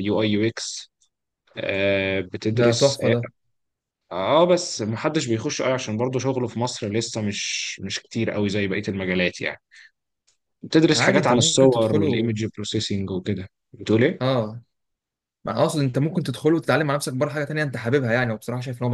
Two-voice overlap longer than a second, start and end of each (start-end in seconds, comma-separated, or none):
11.0-12.3